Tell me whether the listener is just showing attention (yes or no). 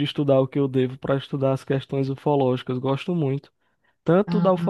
yes